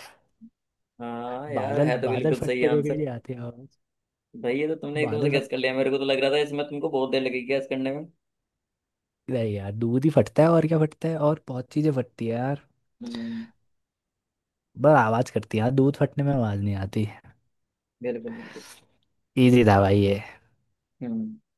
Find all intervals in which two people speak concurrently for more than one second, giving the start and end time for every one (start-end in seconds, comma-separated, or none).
1.6-3.1